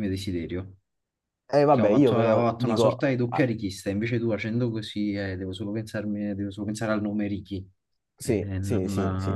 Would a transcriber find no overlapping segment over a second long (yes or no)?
no